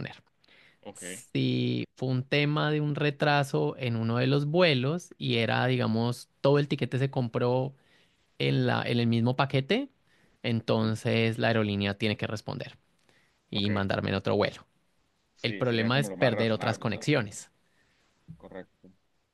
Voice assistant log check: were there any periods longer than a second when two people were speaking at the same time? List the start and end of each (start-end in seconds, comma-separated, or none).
15.4-17.1